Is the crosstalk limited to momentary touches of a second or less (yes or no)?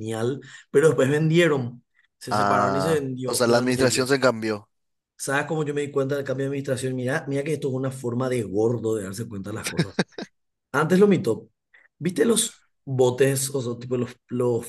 no